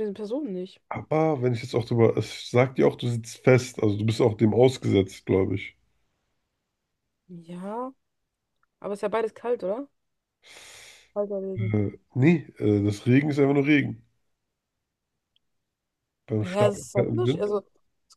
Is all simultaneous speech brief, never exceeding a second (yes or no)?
no